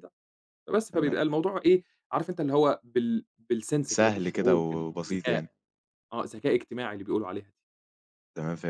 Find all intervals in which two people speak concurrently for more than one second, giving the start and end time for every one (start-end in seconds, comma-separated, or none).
3.9-5.5